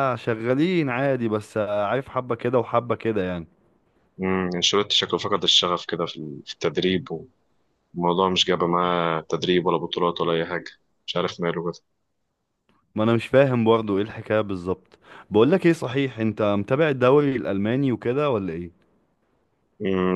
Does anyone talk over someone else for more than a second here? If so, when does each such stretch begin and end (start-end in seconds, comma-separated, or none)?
none